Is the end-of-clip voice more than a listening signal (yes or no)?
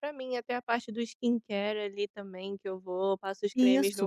yes